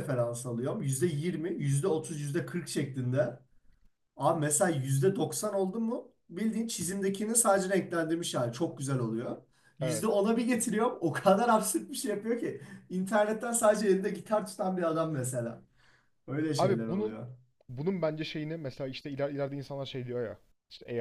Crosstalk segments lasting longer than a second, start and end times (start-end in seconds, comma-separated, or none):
none